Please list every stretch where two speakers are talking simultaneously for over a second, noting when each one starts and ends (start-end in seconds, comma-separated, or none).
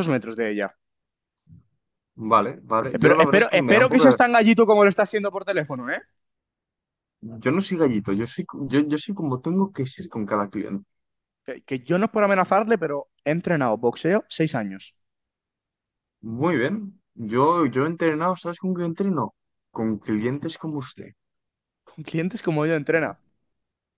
2.9-4.2